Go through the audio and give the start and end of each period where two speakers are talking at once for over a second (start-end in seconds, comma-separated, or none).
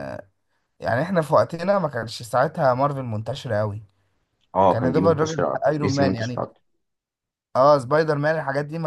4.7-6.4